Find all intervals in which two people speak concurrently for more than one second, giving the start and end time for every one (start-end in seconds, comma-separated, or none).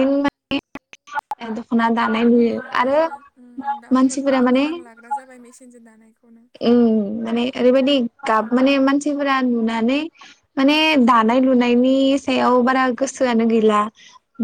none